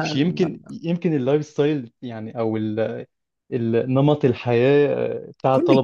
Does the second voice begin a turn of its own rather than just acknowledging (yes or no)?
yes